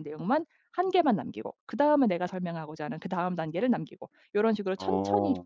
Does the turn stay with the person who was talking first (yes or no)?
yes